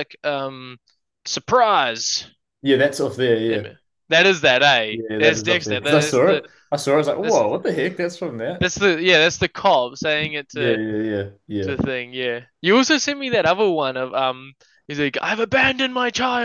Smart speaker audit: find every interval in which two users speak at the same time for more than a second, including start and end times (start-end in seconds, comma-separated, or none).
4.9-6.4